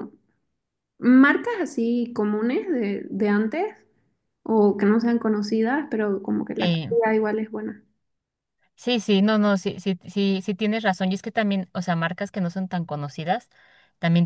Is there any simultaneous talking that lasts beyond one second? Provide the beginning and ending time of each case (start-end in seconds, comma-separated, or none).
none